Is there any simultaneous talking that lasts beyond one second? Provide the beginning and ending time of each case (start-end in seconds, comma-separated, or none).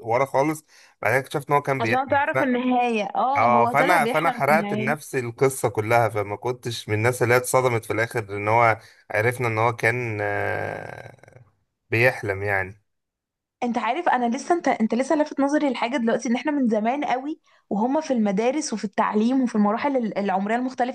3.4-5.0